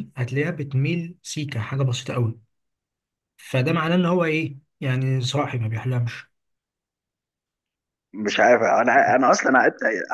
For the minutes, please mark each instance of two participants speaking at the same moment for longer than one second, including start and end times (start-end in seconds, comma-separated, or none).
none